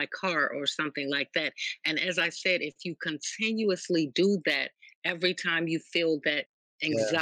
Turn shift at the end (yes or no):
no